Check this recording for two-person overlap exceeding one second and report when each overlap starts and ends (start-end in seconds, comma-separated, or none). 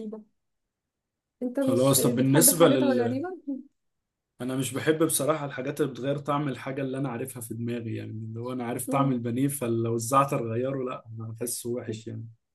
1.6-3.2